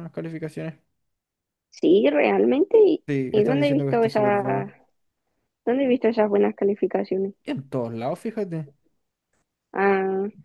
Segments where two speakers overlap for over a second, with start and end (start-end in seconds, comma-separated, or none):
3.1-4.7